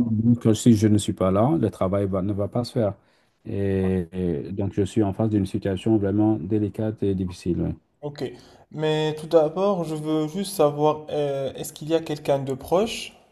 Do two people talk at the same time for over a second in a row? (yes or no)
no